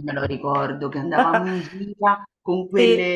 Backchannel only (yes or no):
yes